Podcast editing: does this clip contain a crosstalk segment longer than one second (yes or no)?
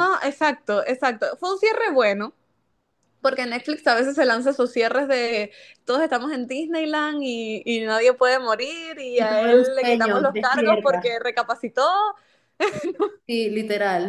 yes